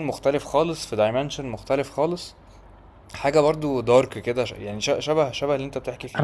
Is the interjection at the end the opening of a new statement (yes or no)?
yes